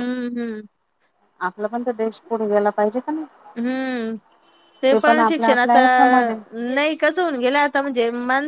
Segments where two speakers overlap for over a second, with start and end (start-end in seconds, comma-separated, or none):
none